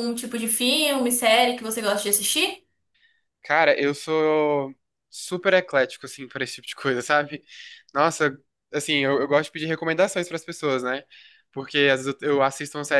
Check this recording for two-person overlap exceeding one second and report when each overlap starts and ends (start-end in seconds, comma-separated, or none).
none